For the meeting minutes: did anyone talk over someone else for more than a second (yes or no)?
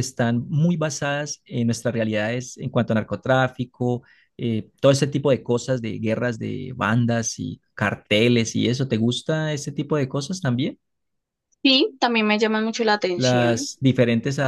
no